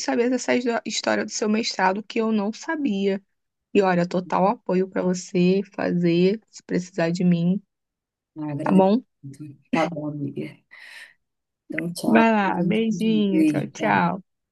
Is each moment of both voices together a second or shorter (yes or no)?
no